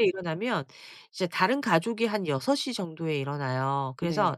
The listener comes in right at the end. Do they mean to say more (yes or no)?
no